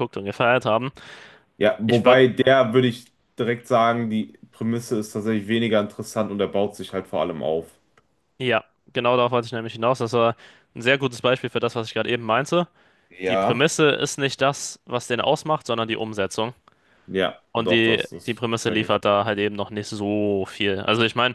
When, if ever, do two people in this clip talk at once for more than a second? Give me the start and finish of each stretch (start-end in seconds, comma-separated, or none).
17.5-19.0